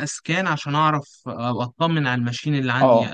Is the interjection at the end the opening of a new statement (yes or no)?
yes